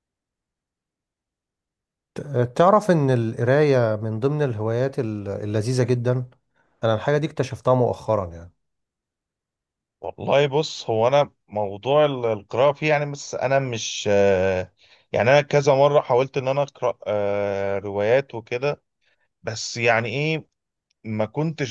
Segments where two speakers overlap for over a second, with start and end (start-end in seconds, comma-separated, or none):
none